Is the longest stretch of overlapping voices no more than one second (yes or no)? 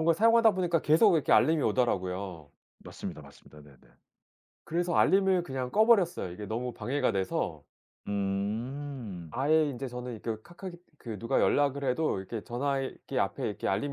yes